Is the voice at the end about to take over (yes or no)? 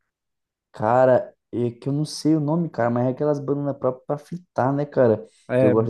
no